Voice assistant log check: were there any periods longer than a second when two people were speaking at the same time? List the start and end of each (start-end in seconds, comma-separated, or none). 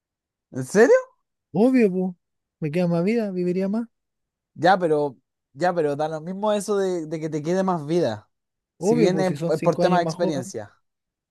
8.8-10.5